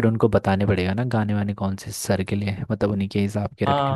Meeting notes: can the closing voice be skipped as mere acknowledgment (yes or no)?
no